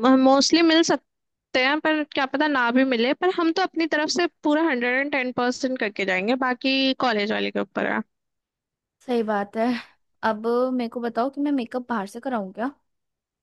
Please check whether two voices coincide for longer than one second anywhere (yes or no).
no